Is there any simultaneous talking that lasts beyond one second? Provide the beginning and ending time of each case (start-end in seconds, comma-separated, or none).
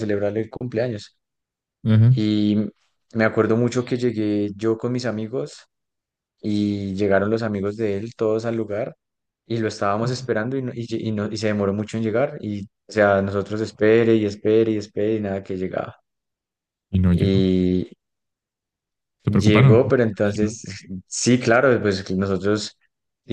19.2-20.6